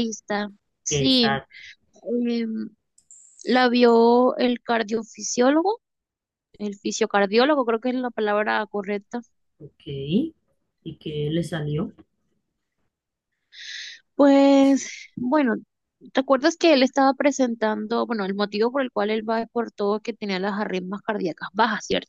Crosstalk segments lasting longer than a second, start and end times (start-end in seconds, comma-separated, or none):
none